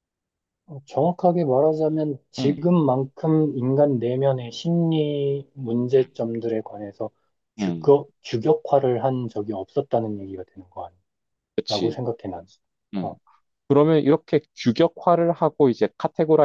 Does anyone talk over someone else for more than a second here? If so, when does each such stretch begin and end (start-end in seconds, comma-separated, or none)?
none